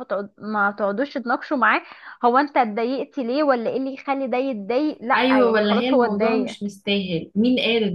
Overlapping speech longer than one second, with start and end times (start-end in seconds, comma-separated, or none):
5.2-6.5